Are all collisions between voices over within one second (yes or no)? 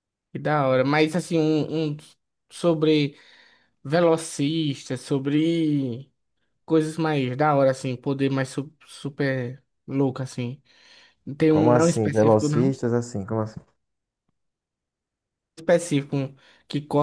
no